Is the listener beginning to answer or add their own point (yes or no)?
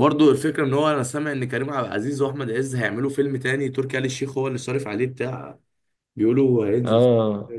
yes